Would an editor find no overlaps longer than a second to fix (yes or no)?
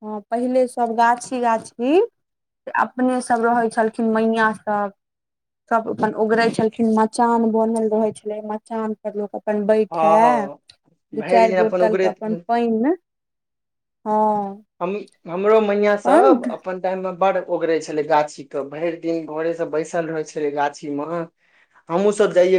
no